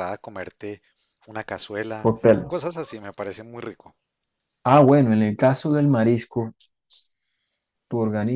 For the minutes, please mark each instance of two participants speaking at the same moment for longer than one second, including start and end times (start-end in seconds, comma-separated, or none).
none